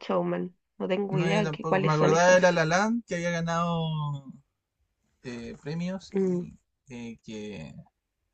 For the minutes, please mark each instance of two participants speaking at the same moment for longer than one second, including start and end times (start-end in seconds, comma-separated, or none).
1.1-2.4